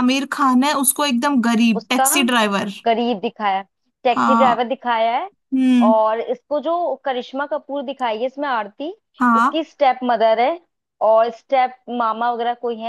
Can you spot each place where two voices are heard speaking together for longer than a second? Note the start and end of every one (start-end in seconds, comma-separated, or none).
none